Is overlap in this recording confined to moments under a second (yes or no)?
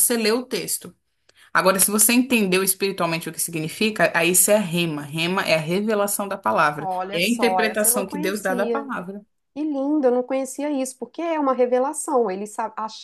no